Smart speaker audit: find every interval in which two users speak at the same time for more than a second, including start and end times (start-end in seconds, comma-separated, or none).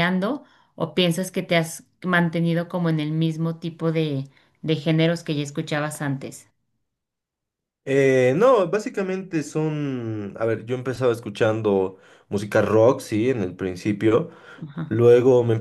none